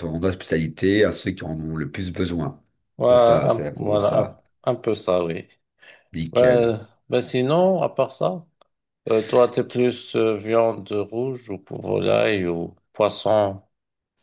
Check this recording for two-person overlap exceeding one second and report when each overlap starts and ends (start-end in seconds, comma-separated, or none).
3.1-4.4